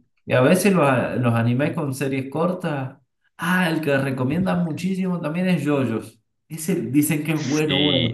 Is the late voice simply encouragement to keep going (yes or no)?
no